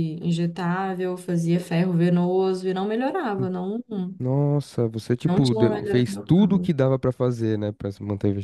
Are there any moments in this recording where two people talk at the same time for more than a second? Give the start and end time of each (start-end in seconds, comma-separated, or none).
5.3-6.7